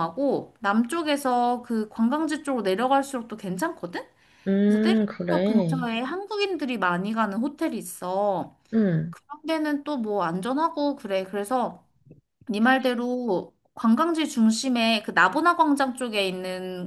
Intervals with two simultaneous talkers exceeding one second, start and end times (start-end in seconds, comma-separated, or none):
4.6-5.9